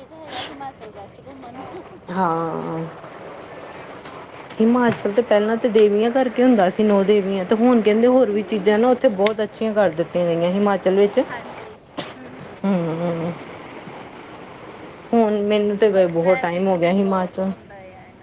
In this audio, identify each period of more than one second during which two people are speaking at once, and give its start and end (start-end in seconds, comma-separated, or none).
15.9-17.5